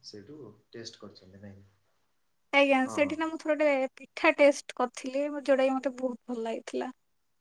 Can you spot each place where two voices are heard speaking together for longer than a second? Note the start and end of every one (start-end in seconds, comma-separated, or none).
none